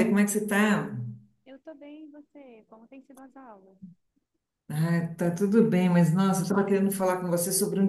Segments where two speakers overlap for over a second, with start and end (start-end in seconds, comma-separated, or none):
none